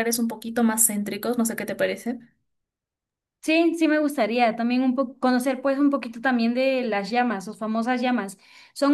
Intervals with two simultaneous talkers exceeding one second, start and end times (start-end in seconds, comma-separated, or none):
none